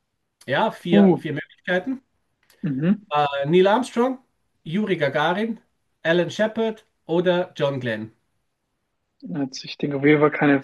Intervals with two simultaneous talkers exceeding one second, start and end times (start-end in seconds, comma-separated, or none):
none